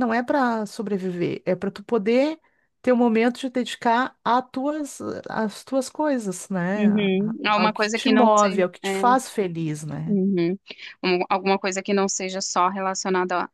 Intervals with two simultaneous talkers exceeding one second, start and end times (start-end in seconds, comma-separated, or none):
6.8-8.9